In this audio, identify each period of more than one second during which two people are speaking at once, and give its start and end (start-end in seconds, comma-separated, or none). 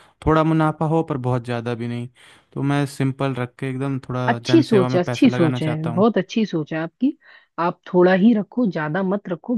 4.3-6.0